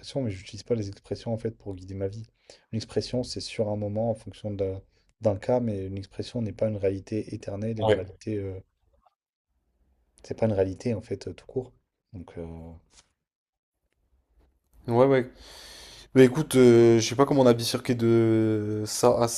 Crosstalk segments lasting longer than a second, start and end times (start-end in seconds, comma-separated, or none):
none